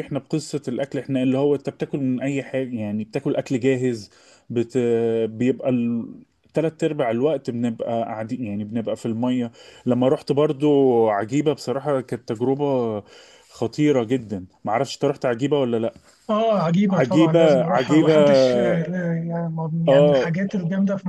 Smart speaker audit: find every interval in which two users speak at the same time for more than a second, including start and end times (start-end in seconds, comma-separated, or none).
16.9-18.1